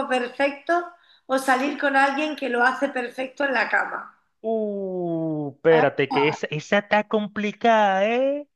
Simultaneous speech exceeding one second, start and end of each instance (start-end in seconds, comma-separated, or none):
none